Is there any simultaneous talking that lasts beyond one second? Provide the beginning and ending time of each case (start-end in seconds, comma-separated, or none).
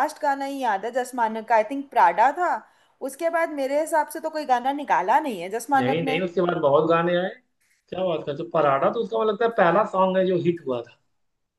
none